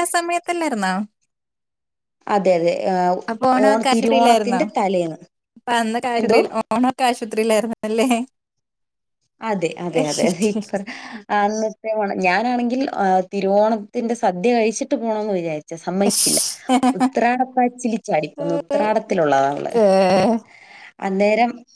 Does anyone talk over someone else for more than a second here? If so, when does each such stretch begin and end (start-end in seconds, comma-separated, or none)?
3.3-4.6